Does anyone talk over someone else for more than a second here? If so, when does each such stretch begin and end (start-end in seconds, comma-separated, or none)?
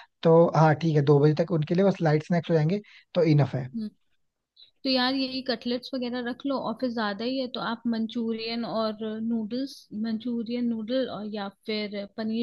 none